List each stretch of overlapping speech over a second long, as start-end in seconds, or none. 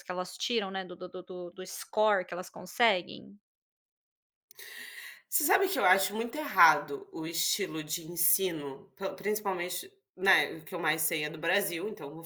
none